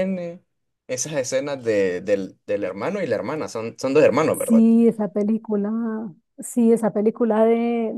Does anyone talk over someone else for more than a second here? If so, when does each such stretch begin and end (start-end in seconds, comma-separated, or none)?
none